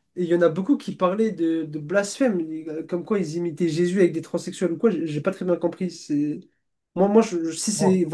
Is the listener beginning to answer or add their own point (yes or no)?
no